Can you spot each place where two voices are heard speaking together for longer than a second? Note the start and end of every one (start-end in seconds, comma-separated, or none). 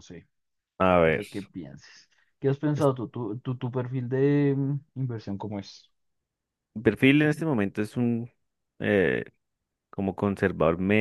none